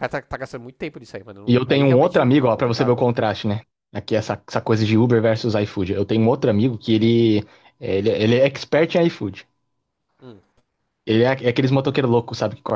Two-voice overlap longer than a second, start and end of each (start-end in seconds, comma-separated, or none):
1.5-3.0